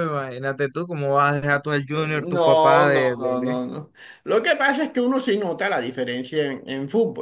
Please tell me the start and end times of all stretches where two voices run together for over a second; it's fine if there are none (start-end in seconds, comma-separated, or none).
2.2-3.6